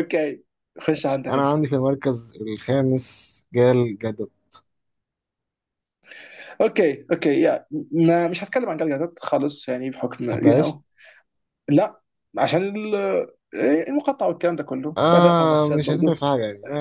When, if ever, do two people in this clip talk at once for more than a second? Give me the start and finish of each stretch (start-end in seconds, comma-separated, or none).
15.0-16.2